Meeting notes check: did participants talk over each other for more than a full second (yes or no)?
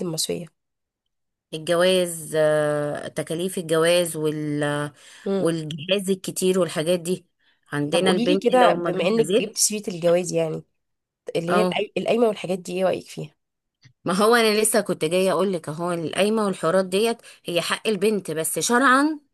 yes